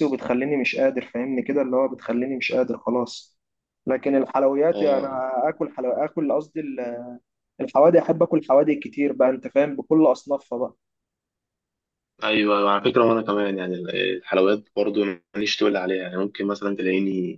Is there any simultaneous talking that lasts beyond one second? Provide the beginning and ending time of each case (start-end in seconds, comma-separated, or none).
none